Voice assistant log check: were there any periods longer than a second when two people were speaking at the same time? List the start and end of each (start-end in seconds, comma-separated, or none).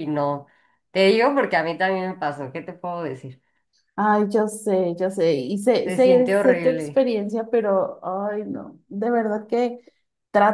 5.8-7.0